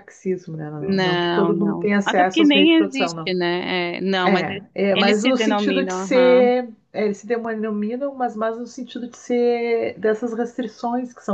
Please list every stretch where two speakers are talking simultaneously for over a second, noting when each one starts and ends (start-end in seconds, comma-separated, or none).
0.8-3.3, 4.2-6.5